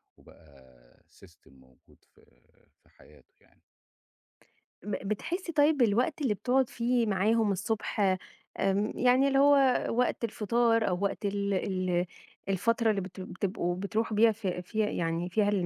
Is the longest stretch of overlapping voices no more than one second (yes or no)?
yes